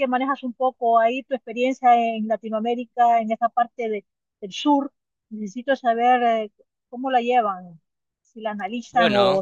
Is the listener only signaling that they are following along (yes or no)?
yes